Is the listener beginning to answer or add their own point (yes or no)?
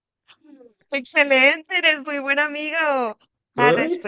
no